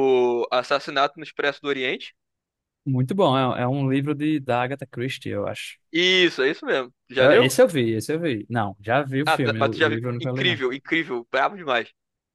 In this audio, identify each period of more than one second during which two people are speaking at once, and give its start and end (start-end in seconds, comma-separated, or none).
9.2-10.6